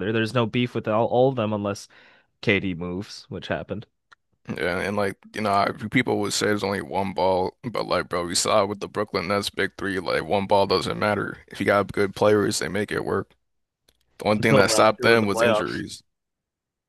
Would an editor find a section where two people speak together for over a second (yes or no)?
yes